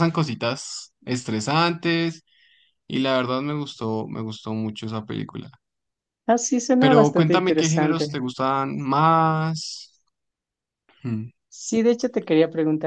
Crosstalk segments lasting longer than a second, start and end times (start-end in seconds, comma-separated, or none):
6.8-8.2